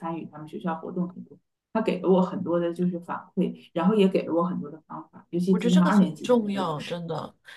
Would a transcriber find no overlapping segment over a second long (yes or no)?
no